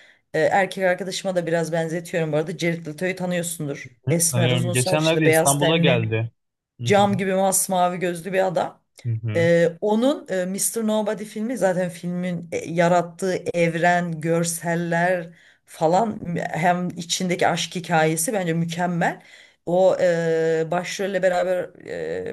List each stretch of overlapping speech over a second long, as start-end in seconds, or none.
4.1-6.2